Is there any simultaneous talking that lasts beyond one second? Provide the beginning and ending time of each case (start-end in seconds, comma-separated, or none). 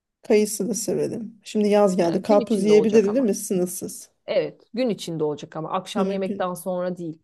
2.0-3.4